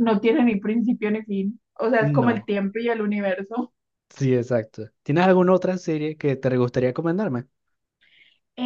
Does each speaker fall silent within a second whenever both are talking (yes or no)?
yes